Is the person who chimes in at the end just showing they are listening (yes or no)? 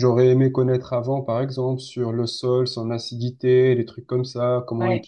yes